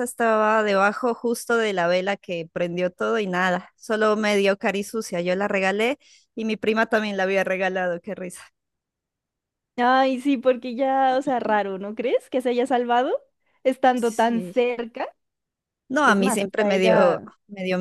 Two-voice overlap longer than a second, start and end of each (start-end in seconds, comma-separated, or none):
16.0-17.3